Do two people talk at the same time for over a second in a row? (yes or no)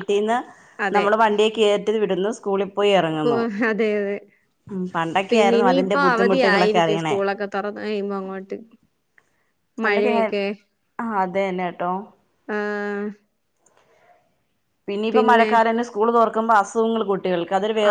yes